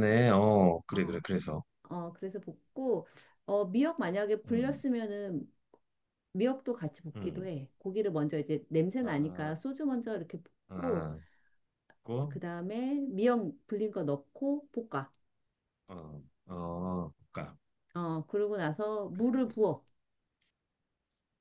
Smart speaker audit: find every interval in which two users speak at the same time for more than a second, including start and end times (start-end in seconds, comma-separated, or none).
none